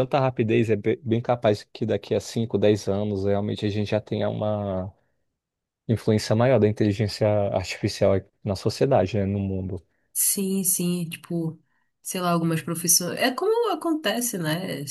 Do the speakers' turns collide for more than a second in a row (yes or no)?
no